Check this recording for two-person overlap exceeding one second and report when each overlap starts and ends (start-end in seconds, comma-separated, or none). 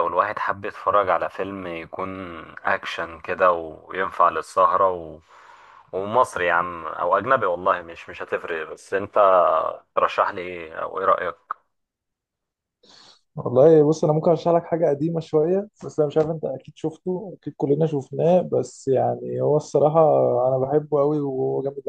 none